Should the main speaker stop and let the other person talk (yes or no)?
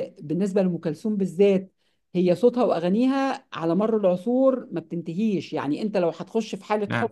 no